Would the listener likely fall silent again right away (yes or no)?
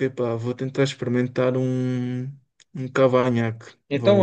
no